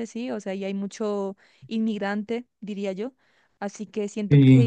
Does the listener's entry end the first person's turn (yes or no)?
no